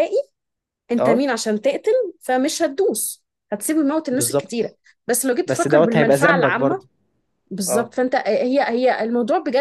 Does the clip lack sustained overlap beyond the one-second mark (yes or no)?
no